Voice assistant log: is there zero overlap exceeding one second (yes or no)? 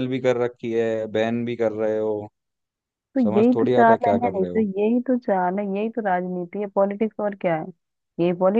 no